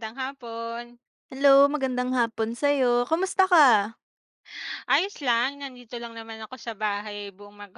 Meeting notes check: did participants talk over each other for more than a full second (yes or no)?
no